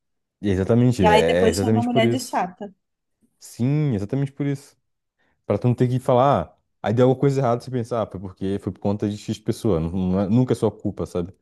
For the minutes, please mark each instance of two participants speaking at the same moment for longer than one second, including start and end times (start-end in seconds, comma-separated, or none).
1.0-2.4